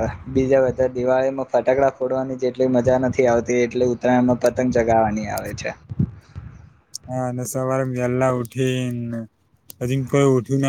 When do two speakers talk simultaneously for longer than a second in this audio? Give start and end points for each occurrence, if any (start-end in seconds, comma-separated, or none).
none